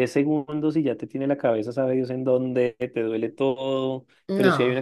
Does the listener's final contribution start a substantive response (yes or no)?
no